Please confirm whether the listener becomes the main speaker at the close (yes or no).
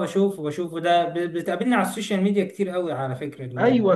yes